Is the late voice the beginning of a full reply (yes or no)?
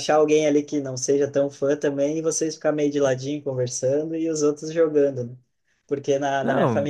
no